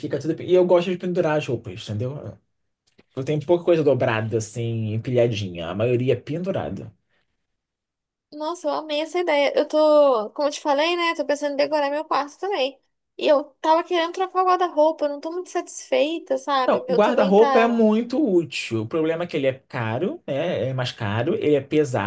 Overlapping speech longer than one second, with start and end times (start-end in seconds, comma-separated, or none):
16.6-17.8